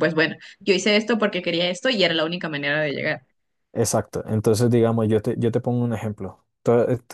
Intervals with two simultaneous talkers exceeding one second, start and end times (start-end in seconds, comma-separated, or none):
none